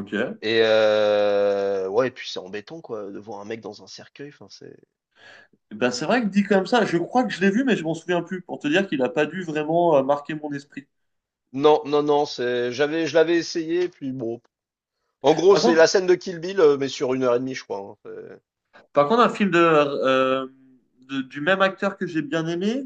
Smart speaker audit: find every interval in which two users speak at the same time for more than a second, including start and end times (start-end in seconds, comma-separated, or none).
none